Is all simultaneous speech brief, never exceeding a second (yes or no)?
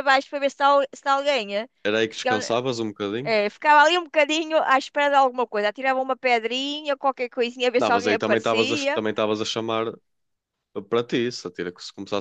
no